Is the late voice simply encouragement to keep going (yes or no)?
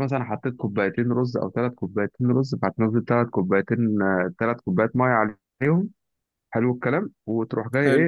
yes